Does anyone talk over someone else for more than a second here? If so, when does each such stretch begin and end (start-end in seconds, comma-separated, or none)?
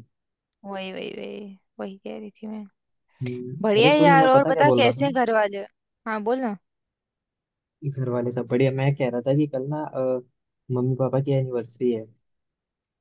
3.6-5.1